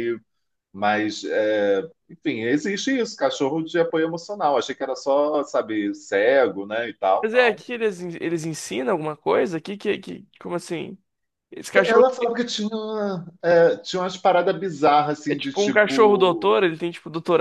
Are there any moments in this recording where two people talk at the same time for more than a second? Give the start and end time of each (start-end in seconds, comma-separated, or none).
15.3-16.6